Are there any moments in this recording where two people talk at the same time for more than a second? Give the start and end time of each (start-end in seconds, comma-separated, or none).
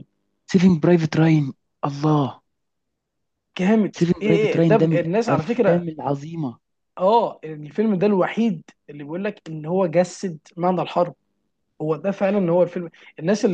4.0-5.9